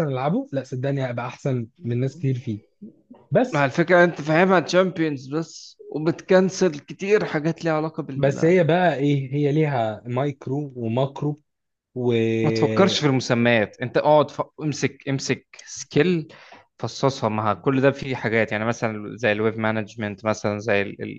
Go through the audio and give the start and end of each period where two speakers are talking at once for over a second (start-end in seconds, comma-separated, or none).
none